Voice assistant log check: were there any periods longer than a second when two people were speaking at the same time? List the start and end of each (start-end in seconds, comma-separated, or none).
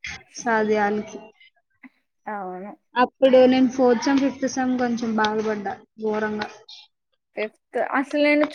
none